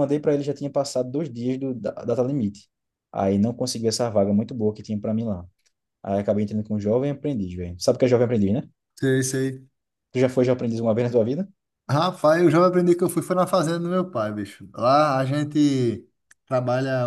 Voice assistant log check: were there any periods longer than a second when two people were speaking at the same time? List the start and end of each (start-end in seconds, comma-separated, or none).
none